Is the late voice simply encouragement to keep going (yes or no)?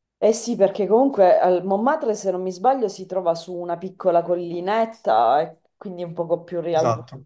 yes